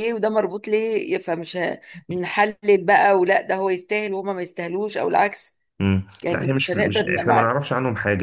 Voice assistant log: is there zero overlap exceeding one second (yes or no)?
no